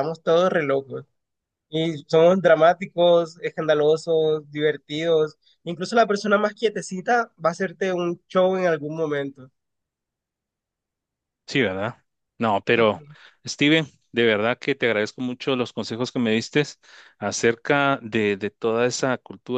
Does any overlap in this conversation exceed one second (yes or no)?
no